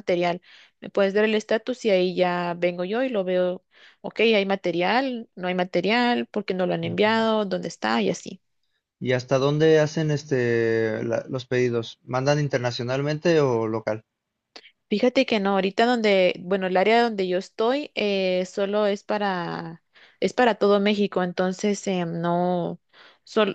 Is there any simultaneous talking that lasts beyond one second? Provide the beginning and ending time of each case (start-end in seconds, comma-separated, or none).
none